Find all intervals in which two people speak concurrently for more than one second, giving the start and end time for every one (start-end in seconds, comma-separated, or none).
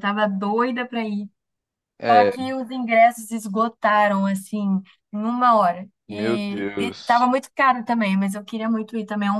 6.1-7.3